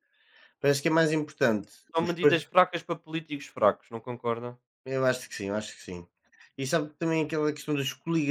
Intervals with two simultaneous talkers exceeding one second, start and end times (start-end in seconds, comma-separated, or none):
none